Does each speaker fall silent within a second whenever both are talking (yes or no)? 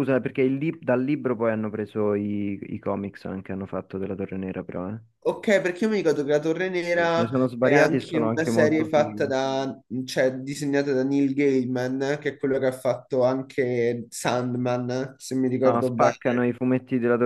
no